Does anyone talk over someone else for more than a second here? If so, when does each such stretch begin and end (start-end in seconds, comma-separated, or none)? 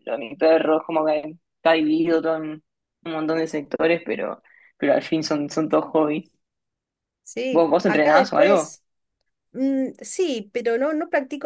7.5-8.8